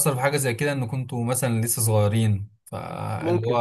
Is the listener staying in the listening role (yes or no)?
yes